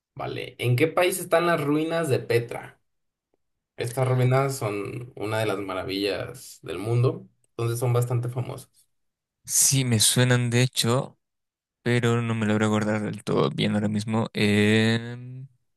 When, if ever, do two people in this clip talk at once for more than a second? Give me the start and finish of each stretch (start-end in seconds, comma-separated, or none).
none